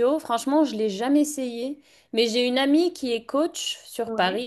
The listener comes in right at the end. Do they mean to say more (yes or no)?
no